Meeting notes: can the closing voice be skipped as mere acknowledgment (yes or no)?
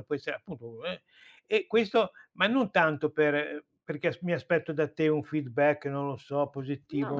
yes